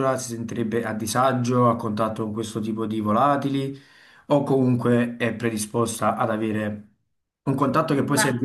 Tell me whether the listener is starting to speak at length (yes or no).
no